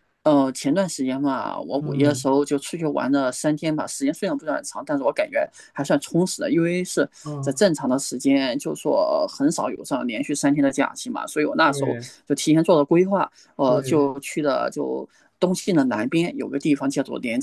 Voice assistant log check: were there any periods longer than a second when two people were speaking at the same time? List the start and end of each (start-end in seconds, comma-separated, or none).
none